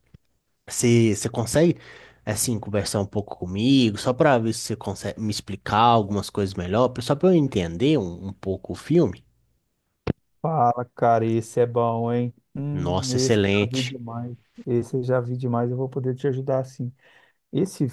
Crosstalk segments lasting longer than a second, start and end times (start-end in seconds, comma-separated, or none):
12.7-14.0